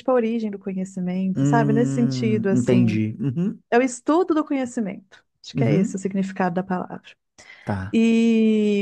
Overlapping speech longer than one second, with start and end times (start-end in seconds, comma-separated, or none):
1.4-3.0